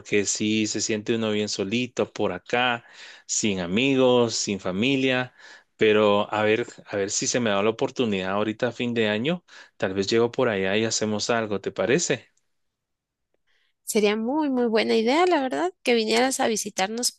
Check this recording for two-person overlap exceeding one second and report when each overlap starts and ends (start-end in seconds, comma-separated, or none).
none